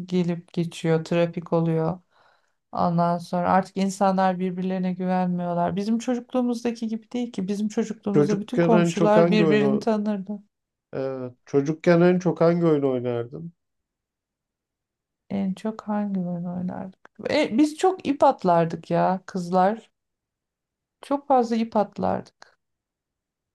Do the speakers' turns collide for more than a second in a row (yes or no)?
yes